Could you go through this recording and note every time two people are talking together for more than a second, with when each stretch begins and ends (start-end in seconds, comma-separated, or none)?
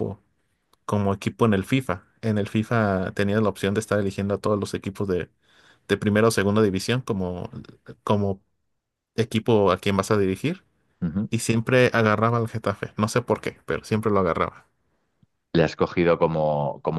none